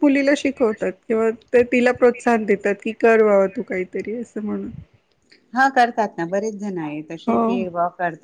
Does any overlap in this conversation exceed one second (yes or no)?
no